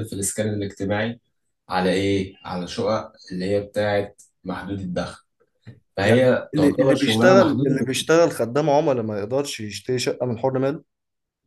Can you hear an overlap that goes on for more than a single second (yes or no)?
yes